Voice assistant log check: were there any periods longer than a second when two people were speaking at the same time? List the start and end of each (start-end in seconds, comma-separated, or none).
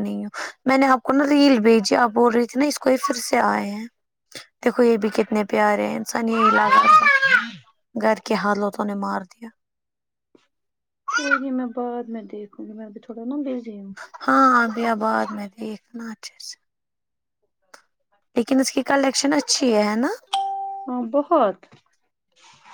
none